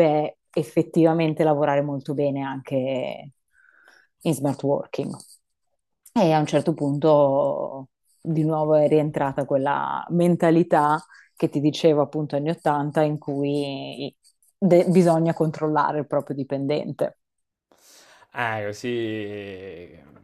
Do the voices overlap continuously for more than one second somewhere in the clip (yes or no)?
no